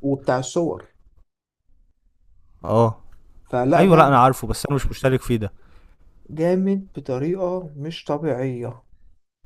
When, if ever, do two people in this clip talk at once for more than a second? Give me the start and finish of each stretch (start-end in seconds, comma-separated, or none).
none